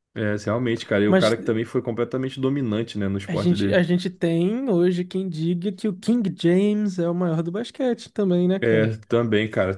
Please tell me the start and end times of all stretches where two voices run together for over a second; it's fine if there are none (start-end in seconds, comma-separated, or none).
none